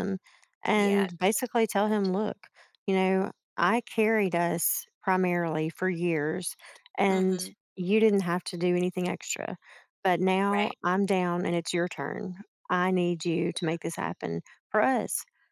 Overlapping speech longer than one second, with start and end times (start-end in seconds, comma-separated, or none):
0.7-2.1